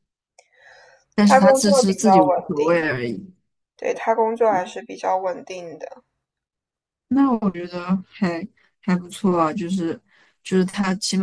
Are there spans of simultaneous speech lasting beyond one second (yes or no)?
yes